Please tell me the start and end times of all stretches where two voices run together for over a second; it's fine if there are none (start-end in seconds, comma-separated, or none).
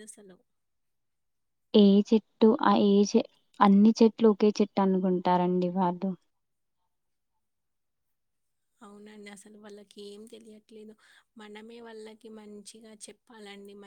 none